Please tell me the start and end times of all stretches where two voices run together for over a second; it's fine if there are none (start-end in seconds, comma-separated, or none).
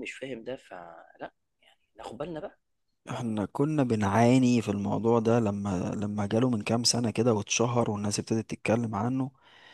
none